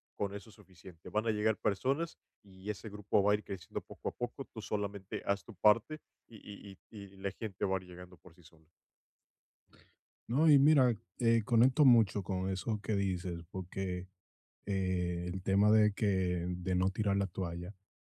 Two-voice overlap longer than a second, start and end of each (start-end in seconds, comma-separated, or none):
none